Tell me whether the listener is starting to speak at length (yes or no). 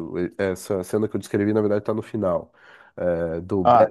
no